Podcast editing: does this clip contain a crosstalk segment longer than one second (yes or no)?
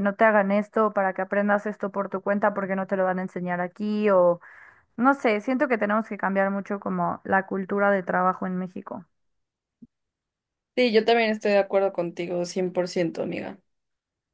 no